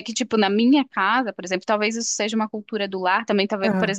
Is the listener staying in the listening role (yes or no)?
yes